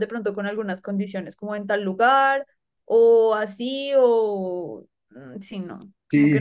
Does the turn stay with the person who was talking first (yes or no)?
no